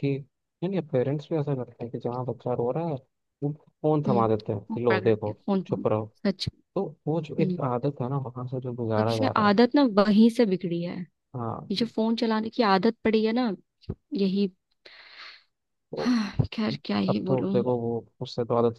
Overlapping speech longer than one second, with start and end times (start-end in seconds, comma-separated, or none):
4.1-5.9